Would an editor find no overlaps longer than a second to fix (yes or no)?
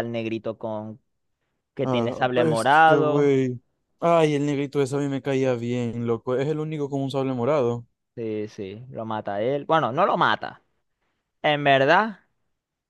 no